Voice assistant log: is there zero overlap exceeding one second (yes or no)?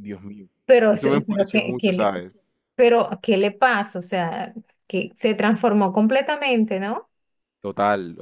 no